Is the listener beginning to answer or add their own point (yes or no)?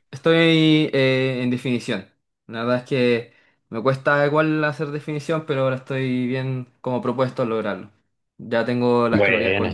no